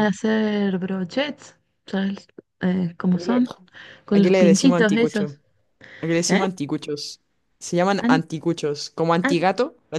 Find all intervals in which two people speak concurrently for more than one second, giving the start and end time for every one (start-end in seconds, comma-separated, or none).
4.1-5.4